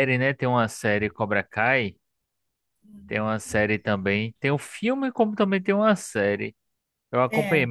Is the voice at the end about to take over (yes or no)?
no